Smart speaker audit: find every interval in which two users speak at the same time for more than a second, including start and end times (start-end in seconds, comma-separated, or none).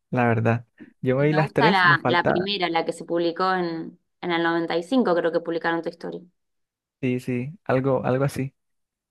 1.2-2.5